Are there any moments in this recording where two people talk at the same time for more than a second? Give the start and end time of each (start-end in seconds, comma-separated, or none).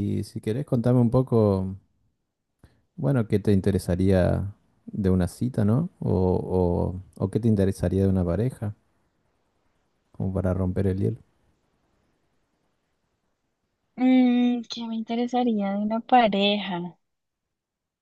none